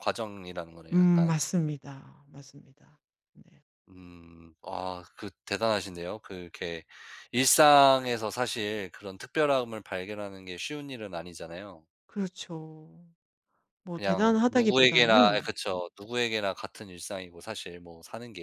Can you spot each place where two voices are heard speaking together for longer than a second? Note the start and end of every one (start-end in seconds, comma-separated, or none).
13.9-15.5